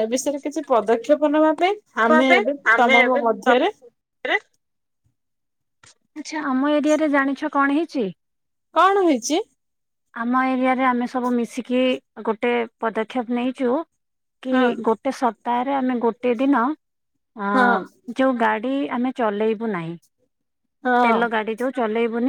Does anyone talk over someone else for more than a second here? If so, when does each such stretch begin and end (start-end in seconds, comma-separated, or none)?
none